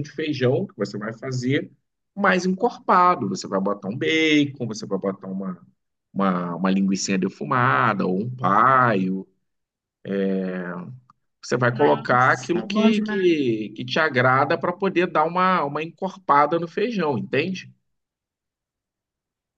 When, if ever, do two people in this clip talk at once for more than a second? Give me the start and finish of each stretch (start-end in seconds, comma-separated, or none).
11.7-13.4